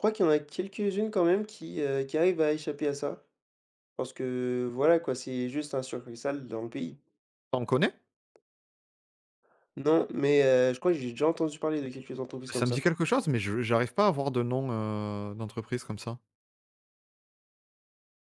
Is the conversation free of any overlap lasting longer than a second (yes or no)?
yes